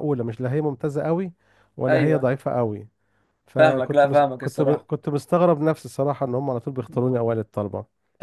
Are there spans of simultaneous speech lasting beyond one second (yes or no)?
yes